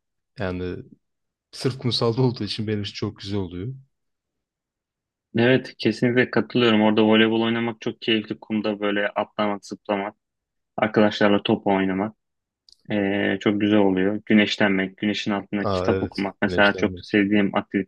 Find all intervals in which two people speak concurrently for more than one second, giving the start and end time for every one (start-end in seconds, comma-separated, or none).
15.6-17.2